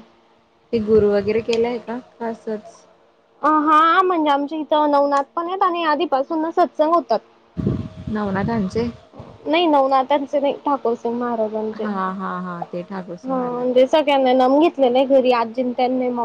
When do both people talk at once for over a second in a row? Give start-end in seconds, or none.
none